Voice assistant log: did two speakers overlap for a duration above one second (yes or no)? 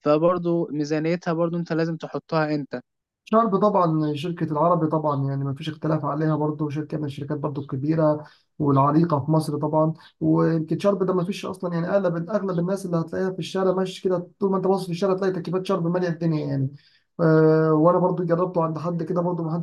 no